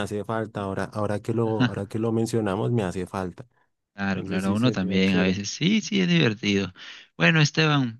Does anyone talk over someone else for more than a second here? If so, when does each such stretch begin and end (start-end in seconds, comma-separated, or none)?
4.1-5.4